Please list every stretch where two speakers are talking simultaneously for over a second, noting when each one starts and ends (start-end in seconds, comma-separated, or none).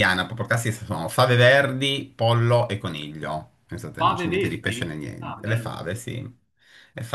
4.0-6.0